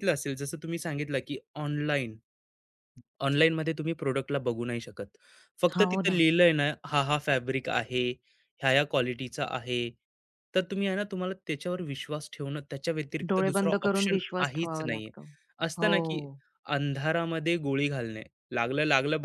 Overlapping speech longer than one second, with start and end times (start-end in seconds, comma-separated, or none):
13.3-15.1